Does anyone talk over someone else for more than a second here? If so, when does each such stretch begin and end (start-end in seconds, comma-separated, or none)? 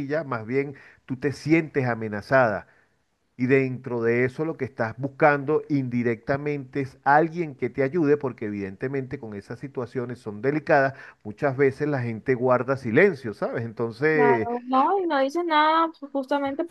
none